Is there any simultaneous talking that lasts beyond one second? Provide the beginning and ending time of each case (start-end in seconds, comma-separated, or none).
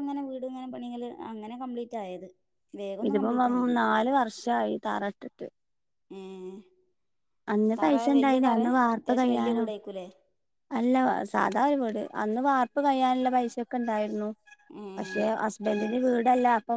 7.8-9.7